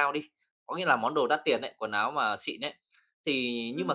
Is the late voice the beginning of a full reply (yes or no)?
no